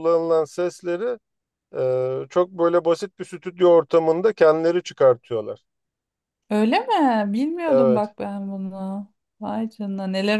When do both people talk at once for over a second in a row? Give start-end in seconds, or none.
none